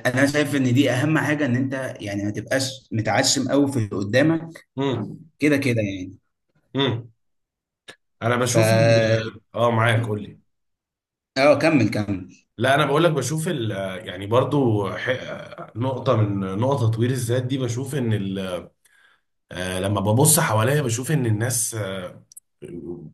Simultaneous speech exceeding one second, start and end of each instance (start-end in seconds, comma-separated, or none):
none